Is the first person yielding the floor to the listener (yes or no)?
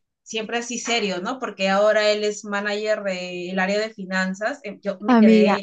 yes